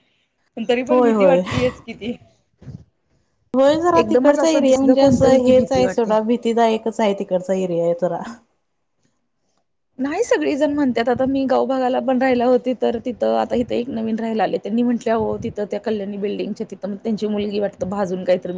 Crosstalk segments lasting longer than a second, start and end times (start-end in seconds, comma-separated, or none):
4.0-6.1